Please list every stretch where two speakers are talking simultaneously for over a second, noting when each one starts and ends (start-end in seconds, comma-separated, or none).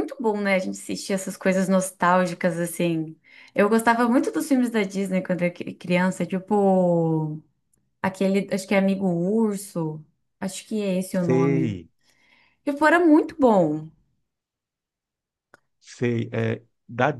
none